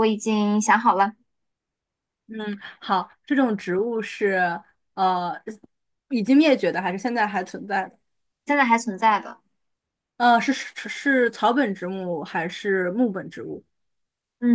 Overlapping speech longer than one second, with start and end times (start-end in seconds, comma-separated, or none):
none